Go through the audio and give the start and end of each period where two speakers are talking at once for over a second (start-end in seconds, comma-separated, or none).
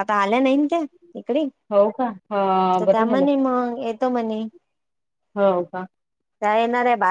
none